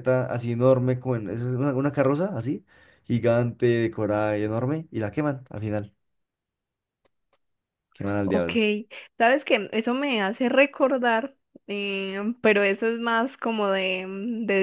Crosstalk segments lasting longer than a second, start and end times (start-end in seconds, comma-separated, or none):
none